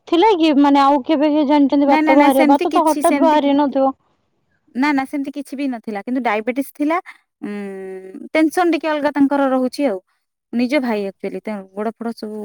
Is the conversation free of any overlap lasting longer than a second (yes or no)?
no